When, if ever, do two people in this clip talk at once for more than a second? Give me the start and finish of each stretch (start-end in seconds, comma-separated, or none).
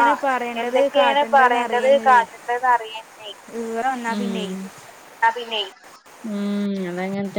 0.6-2.2